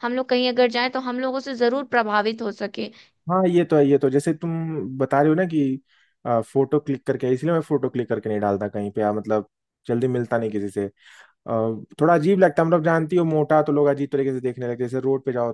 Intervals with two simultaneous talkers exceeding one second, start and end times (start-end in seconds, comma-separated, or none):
none